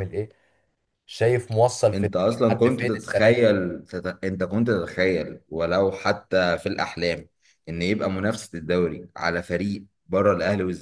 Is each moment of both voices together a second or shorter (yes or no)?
no